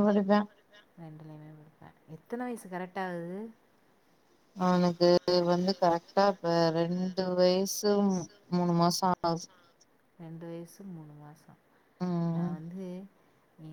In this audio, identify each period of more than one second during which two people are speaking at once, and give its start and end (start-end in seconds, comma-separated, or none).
none